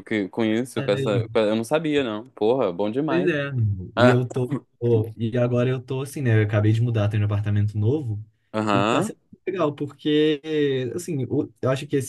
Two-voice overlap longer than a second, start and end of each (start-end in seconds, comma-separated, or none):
none